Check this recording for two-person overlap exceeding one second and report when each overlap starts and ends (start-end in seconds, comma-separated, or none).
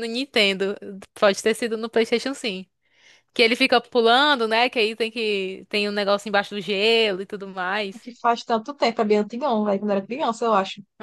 none